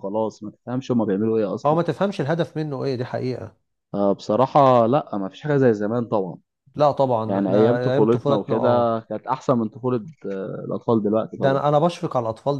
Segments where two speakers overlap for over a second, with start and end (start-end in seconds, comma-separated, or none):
7.2-9.0